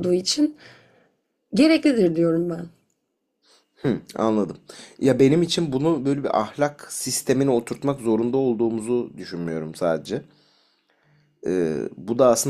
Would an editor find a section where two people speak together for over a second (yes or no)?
no